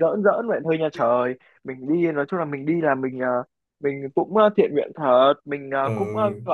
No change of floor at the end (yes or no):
yes